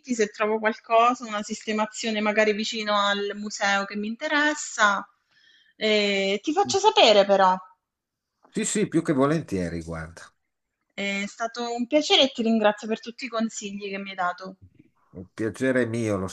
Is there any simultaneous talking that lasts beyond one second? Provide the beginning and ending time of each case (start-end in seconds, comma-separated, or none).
none